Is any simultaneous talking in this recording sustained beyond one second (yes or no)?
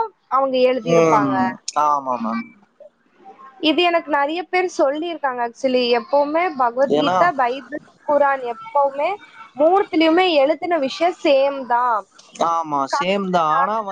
no